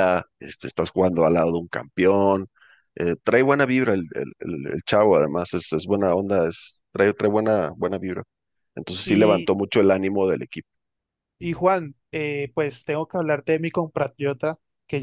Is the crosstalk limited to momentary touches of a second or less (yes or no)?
yes